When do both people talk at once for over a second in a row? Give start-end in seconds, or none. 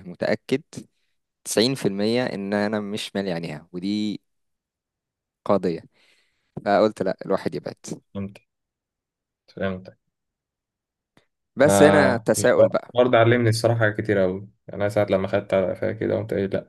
11.7-12.9